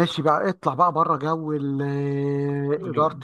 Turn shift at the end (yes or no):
no